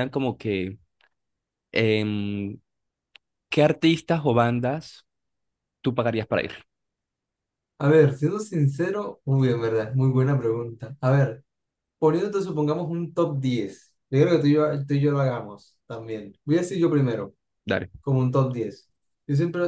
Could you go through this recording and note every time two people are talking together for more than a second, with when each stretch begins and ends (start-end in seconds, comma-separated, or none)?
none